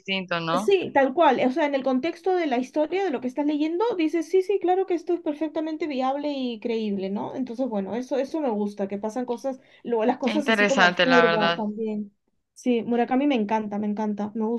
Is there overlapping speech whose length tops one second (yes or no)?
yes